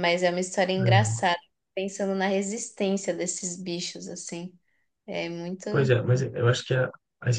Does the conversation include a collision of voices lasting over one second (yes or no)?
no